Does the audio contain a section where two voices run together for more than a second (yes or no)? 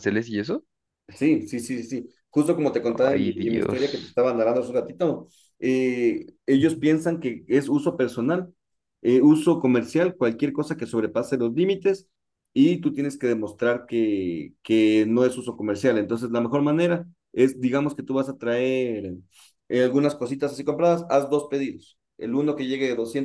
yes